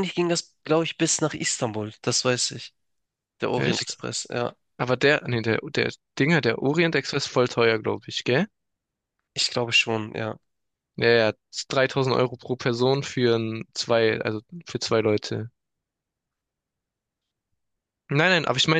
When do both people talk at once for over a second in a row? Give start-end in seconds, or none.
none